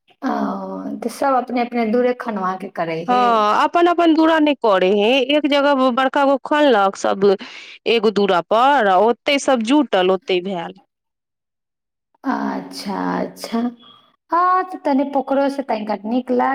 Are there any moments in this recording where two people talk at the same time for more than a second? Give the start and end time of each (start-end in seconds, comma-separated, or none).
none